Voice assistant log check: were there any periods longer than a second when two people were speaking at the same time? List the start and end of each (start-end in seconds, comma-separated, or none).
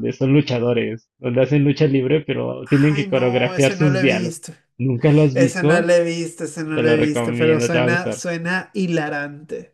2.9-4.4, 6.7-8.2